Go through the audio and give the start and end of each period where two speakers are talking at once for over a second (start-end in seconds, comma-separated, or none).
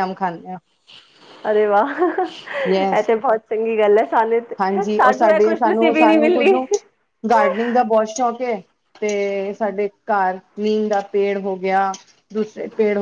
5.0-6.6